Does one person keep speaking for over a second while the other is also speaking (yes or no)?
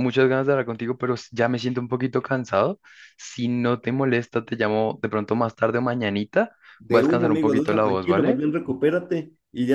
yes